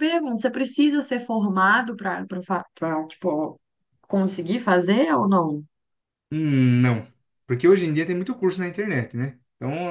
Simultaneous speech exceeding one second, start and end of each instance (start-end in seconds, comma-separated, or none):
none